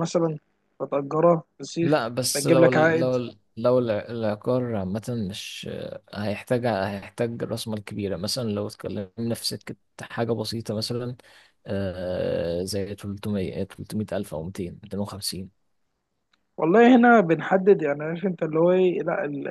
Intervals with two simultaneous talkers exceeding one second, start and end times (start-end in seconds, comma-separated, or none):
1.8-3.1